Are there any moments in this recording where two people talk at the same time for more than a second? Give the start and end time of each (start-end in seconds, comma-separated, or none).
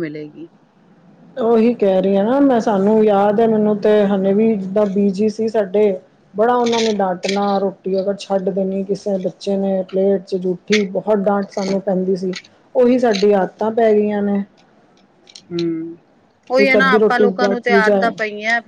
16.6-18.1